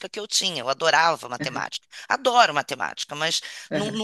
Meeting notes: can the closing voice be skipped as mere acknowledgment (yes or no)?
yes